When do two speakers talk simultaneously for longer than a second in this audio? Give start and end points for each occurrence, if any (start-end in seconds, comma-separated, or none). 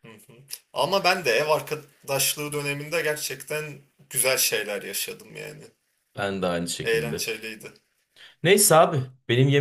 none